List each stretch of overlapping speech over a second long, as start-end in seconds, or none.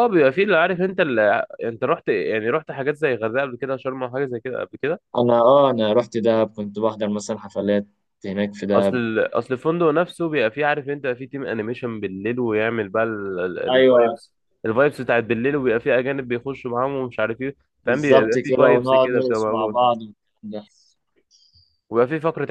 17.8-19.8